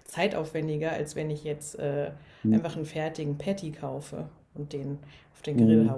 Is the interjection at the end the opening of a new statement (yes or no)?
yes